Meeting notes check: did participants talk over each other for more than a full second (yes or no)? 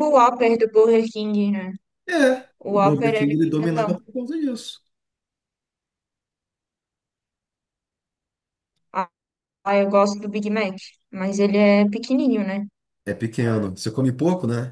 yes